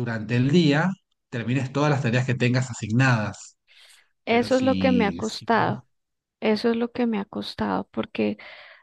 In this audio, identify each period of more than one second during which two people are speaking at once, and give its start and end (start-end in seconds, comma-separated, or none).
4.2-5.7